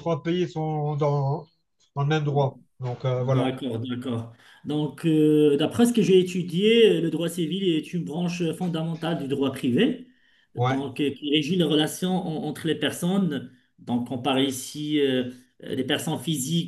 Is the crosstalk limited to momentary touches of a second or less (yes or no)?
yes